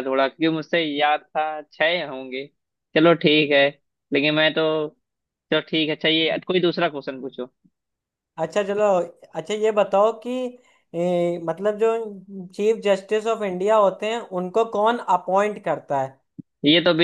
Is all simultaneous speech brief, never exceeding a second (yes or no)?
yes